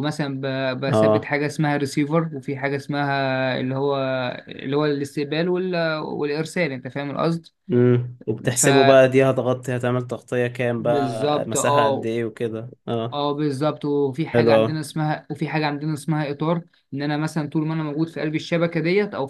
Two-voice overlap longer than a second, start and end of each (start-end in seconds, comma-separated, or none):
10.8-12.1